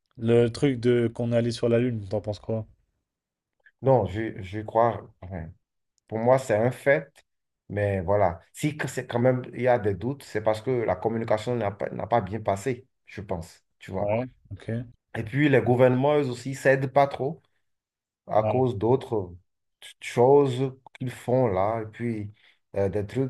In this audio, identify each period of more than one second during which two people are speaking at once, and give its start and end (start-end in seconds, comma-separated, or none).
none